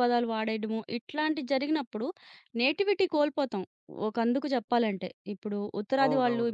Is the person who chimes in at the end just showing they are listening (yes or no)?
yes